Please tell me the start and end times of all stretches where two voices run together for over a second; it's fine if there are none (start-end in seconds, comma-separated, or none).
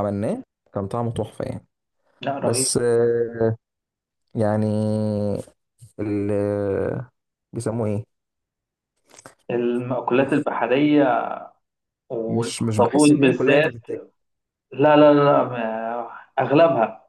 12.3-13.9